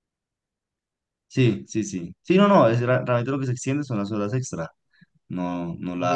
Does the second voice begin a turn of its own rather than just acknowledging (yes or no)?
yes